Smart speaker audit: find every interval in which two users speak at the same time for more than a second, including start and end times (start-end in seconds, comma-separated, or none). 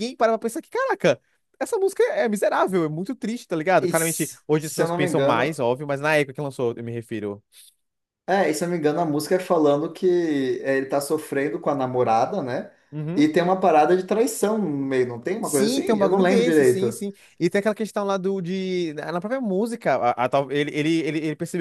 3.8-5.6, 15.5-17.0